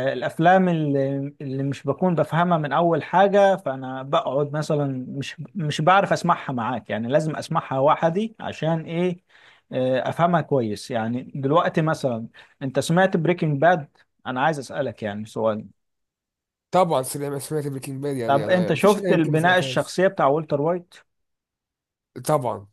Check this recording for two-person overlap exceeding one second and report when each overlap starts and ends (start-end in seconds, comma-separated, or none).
18.3-20.0